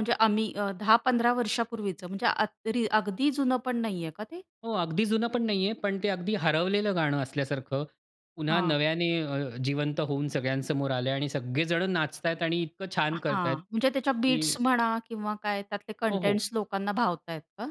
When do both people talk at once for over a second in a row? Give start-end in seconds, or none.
13.1-14.6